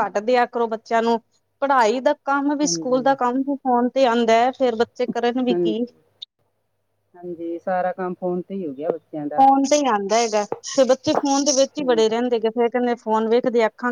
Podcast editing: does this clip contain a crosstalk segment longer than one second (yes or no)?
no